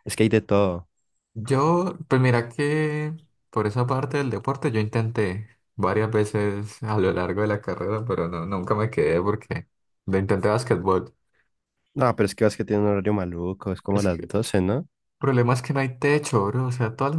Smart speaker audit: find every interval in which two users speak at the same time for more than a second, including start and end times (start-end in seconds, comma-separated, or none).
none